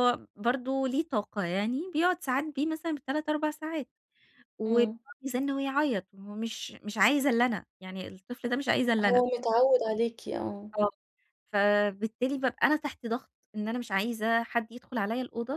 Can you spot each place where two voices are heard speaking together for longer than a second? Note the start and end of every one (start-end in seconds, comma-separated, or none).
none